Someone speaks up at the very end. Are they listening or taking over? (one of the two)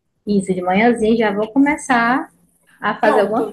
taking over